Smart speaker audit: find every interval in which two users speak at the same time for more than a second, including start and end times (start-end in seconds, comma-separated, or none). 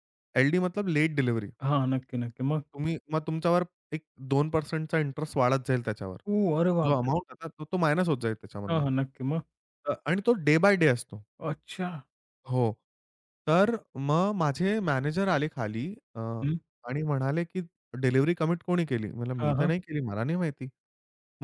none